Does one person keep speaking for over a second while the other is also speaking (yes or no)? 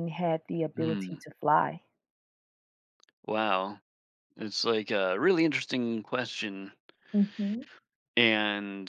no